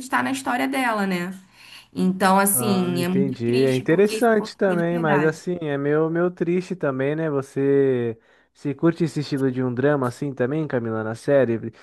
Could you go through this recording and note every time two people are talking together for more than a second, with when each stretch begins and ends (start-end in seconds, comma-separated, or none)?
2.5-5.4